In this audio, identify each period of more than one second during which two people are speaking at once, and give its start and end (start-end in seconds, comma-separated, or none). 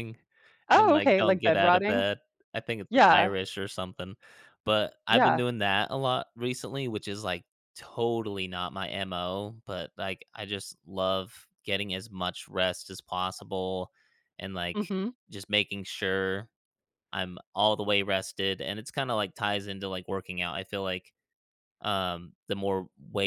0.8-2.1